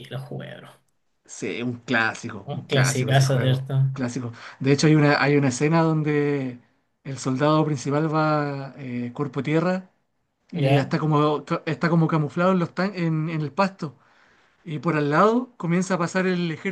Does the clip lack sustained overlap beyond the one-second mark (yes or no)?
no